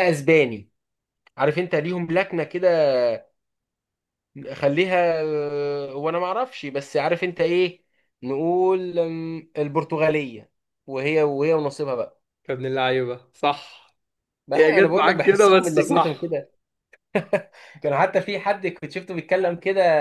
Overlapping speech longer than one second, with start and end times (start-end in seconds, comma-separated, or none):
14.6-16.4